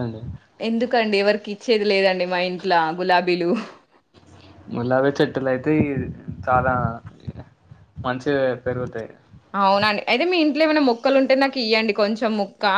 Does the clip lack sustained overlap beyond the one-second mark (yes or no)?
yes